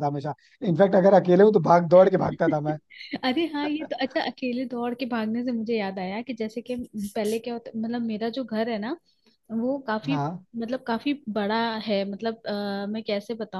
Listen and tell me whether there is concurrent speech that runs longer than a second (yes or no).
no